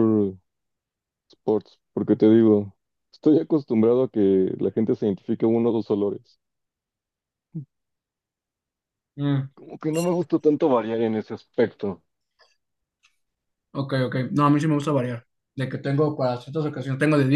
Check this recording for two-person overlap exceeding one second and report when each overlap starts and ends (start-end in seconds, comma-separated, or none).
none